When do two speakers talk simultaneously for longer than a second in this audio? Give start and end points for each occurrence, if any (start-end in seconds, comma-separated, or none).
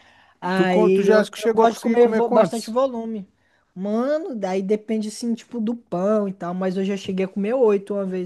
0.5-2.8